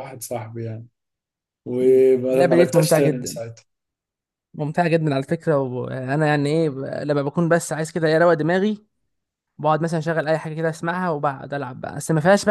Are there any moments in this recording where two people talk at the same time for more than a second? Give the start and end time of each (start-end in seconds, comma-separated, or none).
1.8-3.4